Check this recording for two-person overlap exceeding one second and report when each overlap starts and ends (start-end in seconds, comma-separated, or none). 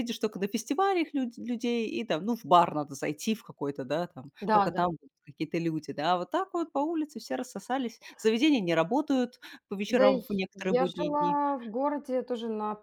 9.9-11.4